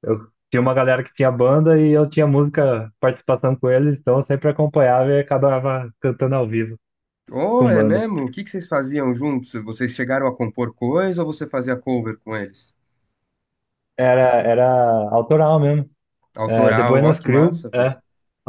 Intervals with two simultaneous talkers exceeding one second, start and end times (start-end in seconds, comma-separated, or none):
16.4-18.0